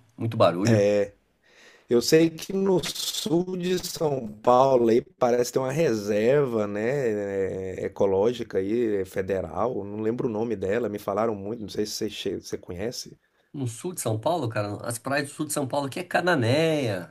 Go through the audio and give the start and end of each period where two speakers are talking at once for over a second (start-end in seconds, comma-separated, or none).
none